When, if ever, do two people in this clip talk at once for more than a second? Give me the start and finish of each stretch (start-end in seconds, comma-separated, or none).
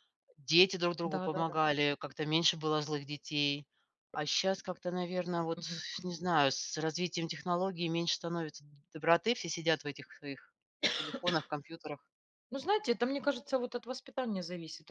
none